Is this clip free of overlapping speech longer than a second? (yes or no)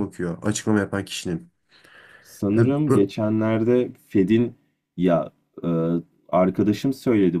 yes